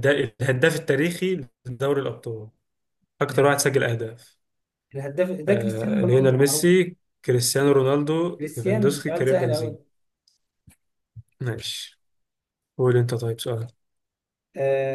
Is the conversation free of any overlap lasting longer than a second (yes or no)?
no